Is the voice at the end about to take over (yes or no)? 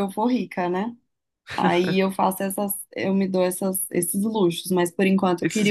no